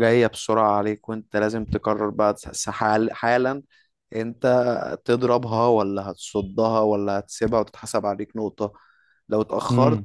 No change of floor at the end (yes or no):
yes